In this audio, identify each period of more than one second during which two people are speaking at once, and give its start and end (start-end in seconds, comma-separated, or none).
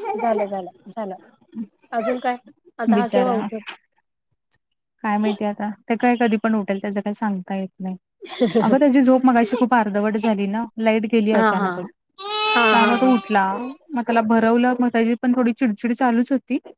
none